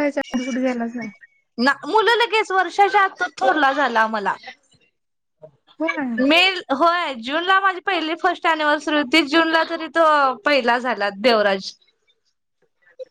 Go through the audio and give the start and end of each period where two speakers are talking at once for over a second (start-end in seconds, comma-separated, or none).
none